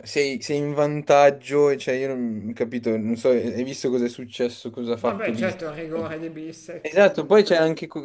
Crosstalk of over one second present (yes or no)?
no